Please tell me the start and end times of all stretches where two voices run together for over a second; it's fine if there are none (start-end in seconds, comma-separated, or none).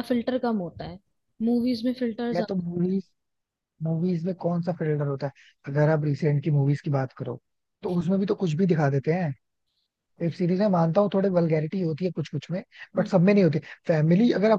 none